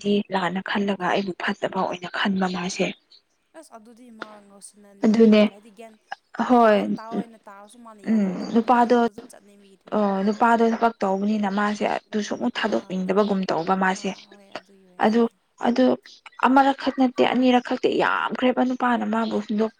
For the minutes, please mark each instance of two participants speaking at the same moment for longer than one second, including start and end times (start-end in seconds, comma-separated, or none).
none